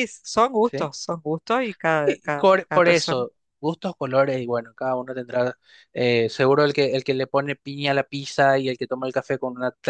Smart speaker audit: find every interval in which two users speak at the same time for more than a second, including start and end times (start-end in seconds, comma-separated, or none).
2.0-3.2